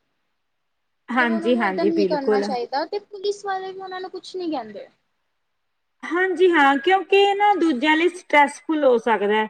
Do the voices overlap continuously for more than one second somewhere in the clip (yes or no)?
yes